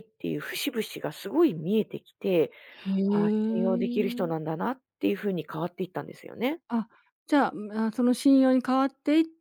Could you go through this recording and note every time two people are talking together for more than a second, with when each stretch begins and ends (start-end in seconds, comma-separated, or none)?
3.1-4.5